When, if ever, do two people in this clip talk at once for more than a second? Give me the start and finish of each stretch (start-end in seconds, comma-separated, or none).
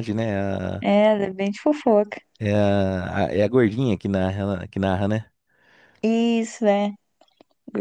none